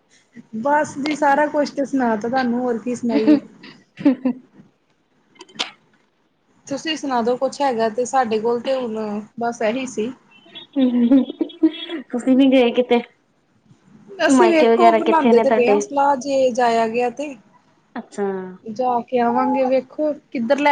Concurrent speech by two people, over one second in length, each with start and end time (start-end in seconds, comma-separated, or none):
14.4-15.8